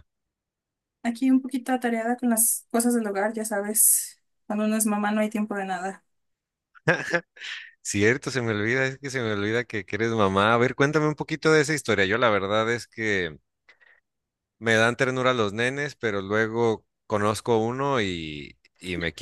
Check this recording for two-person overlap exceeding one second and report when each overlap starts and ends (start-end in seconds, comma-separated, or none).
none